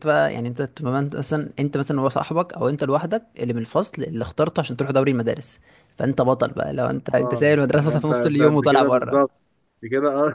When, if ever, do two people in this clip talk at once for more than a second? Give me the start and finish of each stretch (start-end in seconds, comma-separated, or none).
7.2-9.2